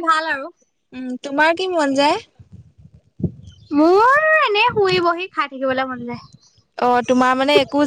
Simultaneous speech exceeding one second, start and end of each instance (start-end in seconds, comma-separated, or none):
none